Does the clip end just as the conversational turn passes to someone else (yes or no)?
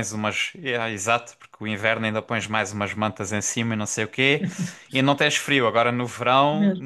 no